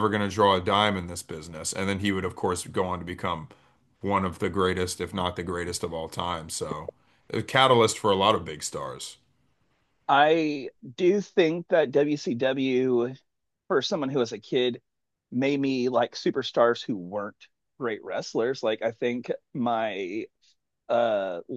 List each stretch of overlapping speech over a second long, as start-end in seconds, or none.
none